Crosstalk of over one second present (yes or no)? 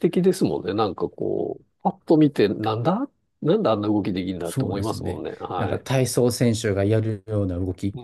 yes